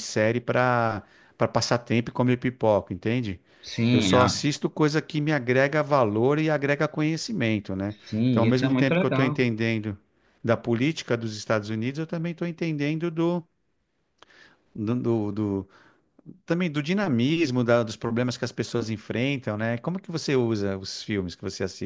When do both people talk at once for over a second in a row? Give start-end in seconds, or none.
8.1-9.4